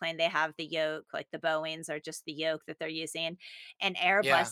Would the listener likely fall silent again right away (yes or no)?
yes